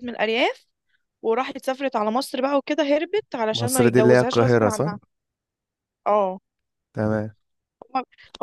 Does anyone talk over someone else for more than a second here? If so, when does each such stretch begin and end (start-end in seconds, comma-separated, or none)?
3.5-4.9